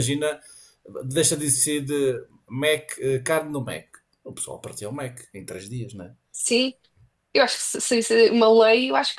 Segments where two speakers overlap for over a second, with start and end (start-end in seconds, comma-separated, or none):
none